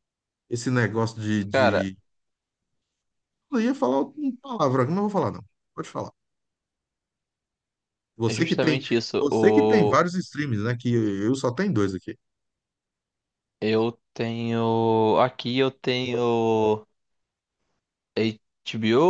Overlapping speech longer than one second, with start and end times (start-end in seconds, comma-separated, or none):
8.3-10.0